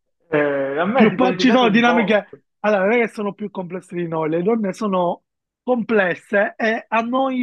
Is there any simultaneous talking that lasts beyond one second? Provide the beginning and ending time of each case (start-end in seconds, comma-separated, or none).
0.9-2.2